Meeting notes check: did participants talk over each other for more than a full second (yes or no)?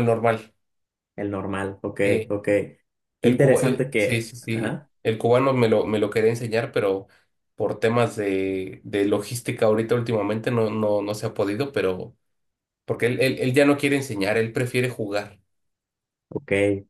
yes